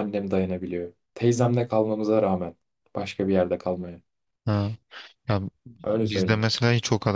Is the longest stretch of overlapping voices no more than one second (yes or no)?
yes